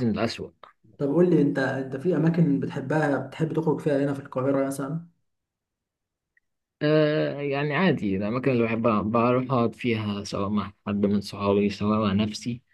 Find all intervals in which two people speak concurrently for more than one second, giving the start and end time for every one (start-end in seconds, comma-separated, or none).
none